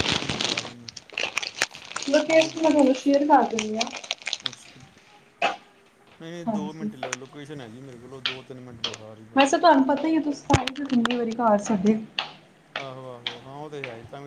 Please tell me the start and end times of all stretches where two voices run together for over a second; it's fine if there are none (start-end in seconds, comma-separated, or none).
none